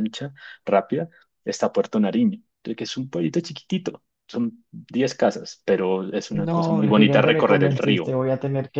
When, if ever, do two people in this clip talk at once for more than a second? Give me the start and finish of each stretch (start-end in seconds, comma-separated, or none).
6.3-8.2